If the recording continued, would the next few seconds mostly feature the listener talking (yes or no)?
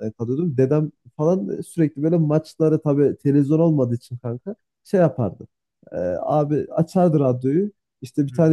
no